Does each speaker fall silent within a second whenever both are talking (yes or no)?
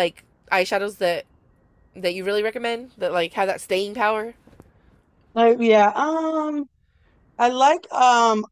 yes